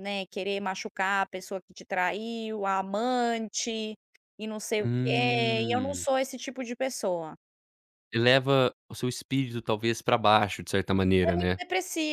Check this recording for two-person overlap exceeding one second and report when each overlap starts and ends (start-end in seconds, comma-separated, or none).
4.8-6.1